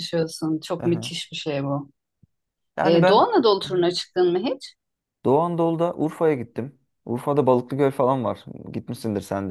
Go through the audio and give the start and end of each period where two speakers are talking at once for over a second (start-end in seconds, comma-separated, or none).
none